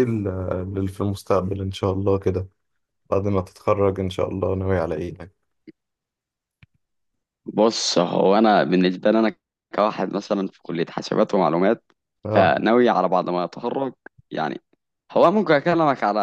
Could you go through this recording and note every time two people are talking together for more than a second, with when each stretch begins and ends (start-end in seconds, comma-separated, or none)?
none